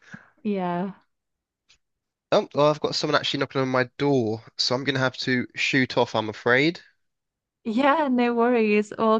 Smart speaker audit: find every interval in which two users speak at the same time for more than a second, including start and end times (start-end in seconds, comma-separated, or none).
none